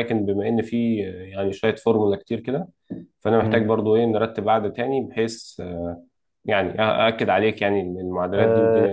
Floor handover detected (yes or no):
yes